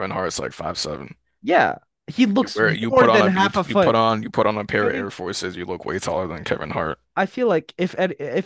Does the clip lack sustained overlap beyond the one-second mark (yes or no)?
no